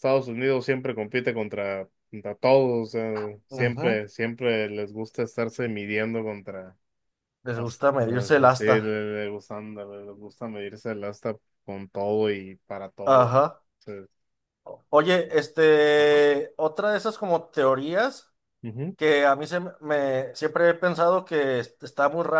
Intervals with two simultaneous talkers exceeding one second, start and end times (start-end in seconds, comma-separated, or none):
7.5-8.8